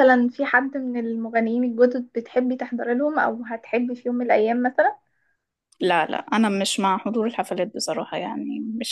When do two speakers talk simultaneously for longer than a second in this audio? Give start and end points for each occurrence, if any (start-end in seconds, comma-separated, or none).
none